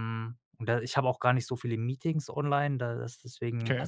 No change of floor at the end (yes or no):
yes